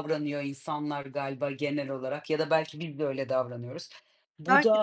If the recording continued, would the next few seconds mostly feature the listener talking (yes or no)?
no